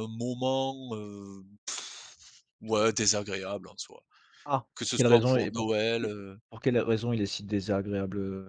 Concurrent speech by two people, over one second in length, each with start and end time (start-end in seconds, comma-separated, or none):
4.7-6.0